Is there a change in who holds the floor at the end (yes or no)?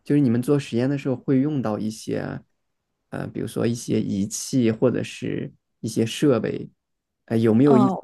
no